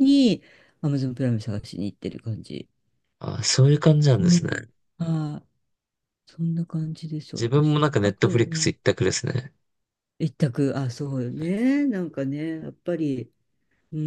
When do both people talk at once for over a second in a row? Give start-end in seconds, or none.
7.4-8.7